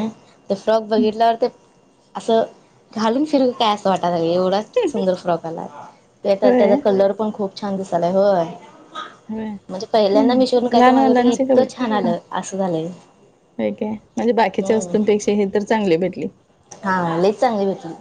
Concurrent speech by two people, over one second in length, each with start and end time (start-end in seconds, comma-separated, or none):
9.7-11.4